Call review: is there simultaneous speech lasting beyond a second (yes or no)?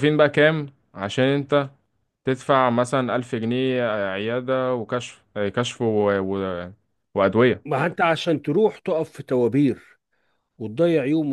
no